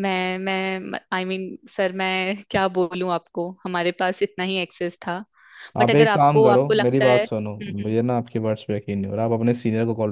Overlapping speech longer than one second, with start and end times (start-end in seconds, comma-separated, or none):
5.8-7.9